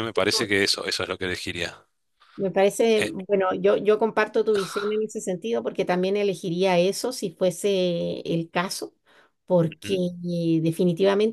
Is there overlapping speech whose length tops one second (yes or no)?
no